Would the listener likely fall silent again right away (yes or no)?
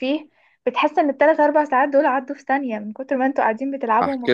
no